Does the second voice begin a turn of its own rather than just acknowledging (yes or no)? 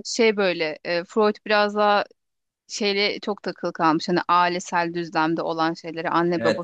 no